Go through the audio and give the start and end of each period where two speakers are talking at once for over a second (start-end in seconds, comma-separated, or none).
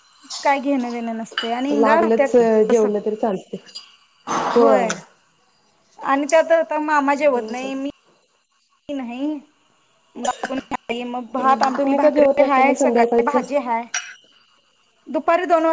11.4-13.4